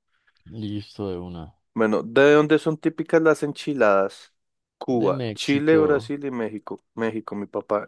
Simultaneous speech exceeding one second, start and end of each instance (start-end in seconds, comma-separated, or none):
4.9-6.1